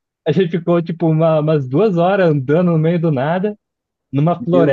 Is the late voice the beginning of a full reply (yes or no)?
no